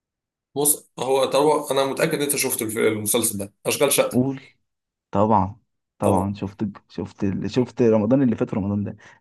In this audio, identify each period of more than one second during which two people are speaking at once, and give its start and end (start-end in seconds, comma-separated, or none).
none